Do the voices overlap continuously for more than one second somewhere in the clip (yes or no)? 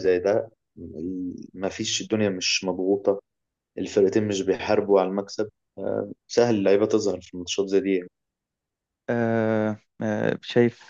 no